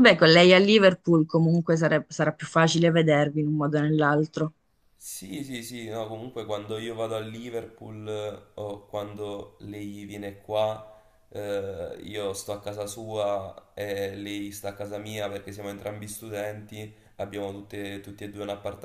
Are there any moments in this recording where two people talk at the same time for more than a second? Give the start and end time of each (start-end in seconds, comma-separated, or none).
none